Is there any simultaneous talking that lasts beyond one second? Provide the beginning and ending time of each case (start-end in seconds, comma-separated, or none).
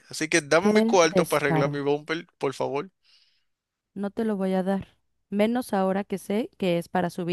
0.6-1.8